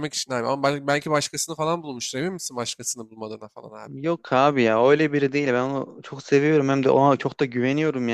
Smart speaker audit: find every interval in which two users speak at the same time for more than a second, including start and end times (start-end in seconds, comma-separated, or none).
none